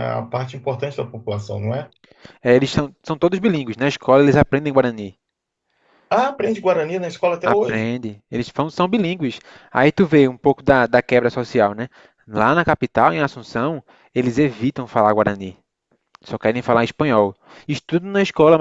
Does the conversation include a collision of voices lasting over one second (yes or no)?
no